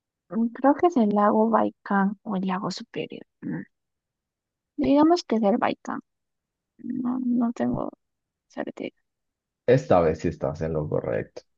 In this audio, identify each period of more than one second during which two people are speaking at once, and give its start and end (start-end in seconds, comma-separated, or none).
none